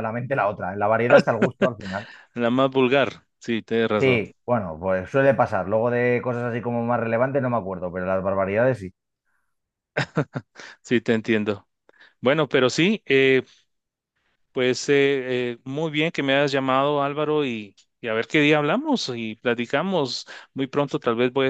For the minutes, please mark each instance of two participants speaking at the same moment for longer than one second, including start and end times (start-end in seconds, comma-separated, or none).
none